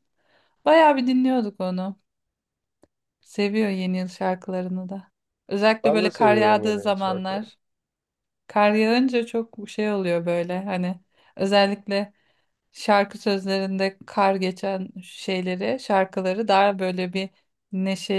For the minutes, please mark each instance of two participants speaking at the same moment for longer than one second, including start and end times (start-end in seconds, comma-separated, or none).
5.8-7.5